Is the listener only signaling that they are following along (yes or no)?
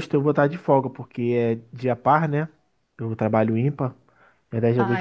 no